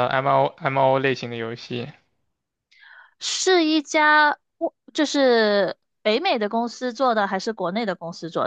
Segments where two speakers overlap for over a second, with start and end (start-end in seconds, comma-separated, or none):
none